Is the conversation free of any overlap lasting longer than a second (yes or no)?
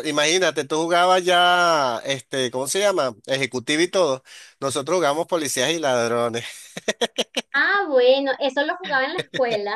yes